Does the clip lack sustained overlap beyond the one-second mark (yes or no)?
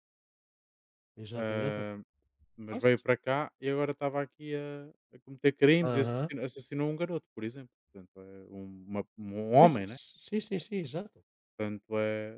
yes